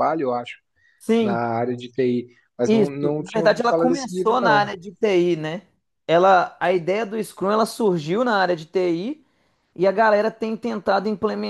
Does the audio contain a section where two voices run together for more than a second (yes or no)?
yes